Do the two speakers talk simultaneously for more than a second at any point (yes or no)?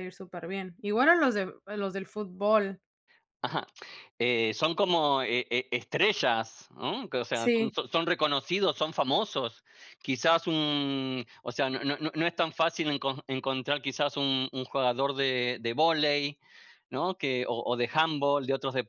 no